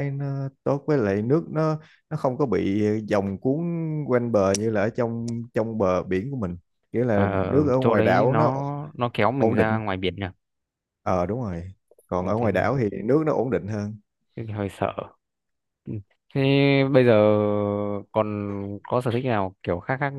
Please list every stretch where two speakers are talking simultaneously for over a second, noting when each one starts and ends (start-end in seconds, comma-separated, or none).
7.1-8.5